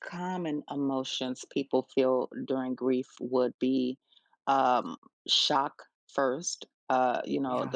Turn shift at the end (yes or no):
no